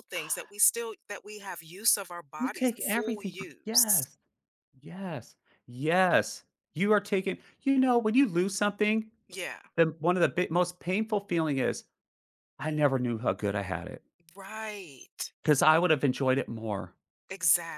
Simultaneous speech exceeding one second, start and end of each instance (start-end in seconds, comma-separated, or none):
2.4-4.1